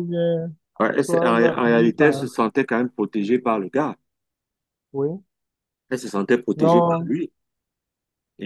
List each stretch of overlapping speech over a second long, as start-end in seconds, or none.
1.0-2.2